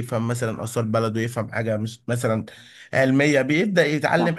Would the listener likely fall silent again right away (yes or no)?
yes